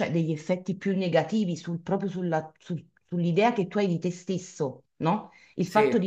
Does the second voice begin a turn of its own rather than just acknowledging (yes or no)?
no